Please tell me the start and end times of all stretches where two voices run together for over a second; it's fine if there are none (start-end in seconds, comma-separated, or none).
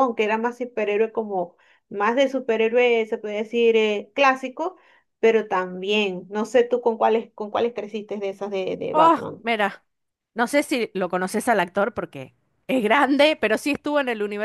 none